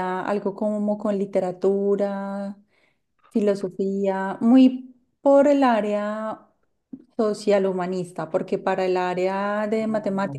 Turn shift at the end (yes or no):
no